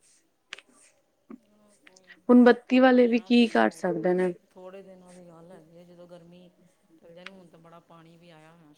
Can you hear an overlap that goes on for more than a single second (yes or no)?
no